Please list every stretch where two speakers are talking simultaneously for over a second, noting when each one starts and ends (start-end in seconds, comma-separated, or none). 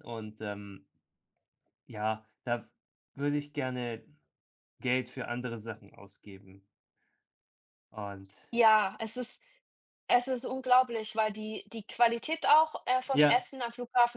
none